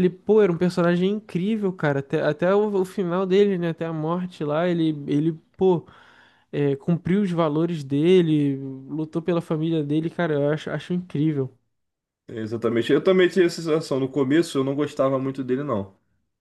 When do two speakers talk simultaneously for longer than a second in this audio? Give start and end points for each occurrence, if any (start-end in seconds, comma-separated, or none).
none